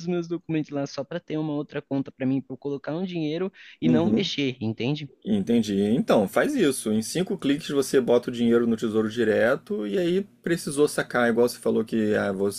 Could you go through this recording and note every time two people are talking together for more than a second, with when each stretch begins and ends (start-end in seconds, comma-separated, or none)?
none